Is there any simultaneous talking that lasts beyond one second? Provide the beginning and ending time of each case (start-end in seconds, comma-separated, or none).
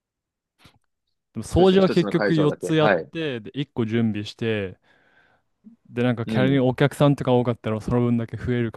1.5-3.1